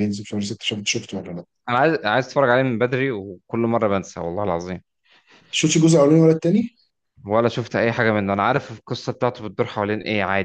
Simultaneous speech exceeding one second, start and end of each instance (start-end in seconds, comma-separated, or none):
none